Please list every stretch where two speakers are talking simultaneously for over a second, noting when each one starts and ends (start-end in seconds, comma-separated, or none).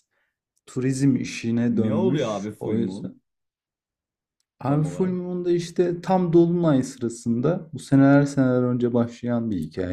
1.7-3.1